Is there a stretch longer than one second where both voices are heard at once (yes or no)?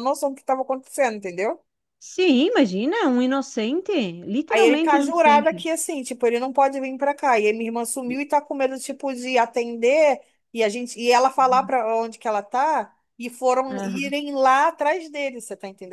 yes